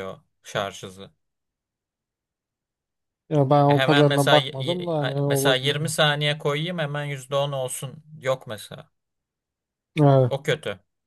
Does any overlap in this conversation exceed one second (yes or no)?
yes